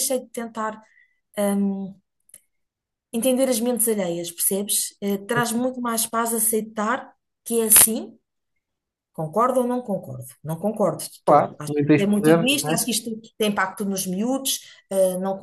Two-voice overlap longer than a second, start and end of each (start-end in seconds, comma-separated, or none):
11.2-12.8